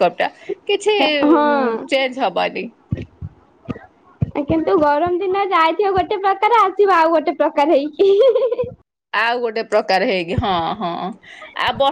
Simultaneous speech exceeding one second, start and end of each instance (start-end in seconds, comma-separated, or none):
none